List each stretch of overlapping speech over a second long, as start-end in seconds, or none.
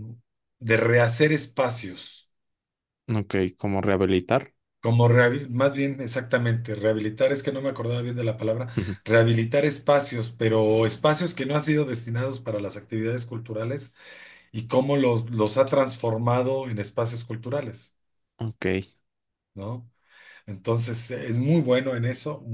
none